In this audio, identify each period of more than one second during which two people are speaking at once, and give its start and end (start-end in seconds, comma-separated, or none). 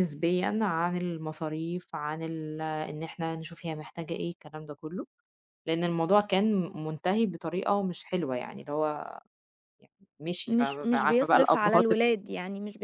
10.5-12.0